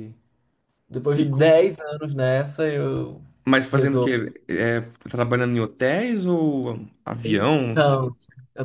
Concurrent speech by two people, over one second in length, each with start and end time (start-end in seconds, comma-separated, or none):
none